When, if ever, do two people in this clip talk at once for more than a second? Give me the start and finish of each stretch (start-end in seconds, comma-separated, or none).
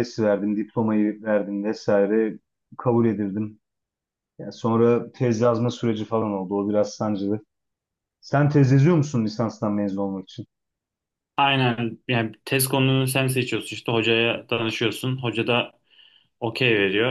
none